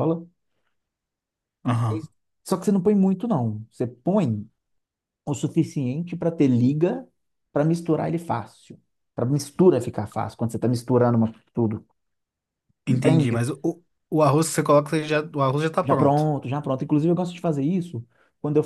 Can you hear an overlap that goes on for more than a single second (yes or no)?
no